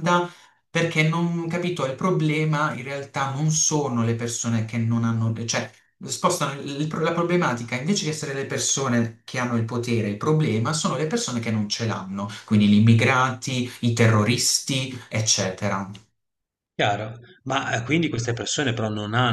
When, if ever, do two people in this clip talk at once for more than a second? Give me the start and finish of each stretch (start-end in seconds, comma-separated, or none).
none